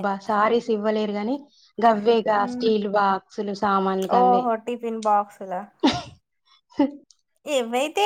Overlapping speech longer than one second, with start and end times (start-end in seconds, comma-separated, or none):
none